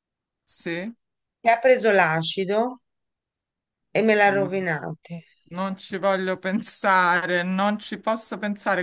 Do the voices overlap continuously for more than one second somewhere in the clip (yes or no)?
no